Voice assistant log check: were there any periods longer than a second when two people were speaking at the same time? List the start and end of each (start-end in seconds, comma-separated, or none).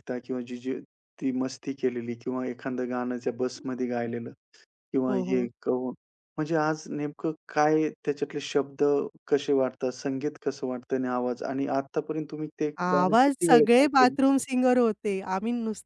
12.8-14.1